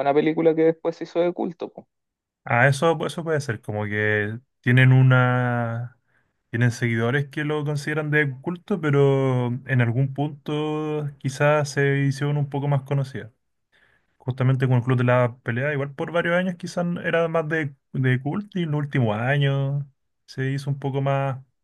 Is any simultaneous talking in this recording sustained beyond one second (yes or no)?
no